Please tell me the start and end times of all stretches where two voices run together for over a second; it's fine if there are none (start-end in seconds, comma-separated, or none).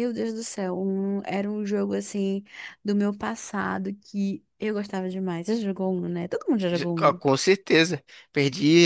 none